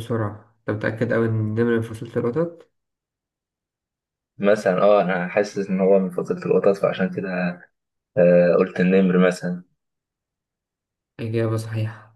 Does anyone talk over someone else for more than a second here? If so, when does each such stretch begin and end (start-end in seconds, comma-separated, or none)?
none